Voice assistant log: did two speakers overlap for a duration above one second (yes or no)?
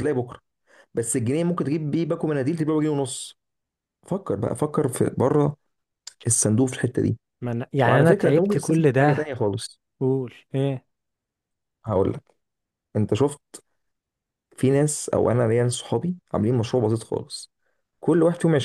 yes